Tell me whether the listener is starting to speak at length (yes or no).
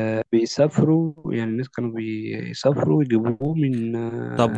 yes